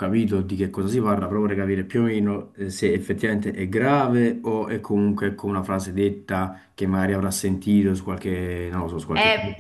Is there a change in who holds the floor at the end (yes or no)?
yes